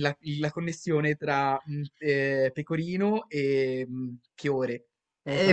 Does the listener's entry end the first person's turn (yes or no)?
yes